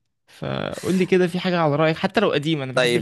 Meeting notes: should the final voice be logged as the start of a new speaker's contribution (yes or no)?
yes